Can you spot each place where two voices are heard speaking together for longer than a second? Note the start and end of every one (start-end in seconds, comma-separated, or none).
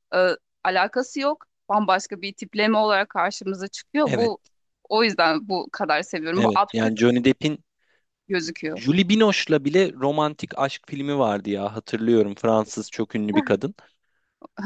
none